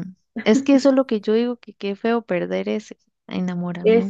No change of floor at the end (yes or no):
no